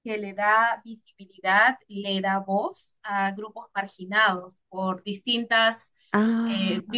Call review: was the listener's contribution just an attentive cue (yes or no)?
yes